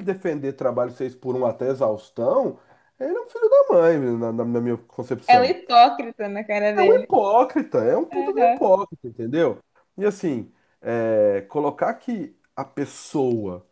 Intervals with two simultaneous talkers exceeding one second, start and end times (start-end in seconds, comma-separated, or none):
none